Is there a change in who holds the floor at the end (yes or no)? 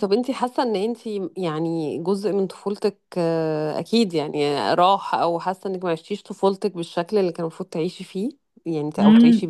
yes